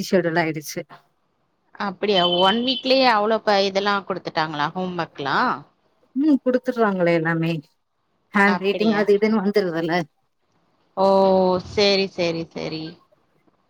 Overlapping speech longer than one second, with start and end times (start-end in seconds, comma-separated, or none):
none